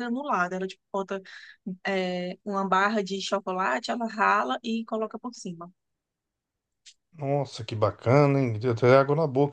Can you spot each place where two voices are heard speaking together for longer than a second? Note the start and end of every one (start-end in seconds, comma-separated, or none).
none